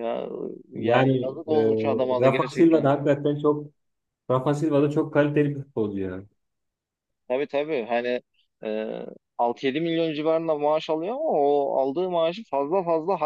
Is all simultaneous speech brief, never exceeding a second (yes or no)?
no